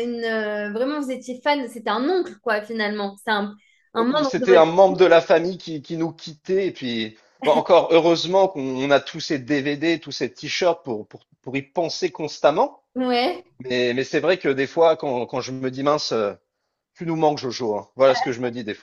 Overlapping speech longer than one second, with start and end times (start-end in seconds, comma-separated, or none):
none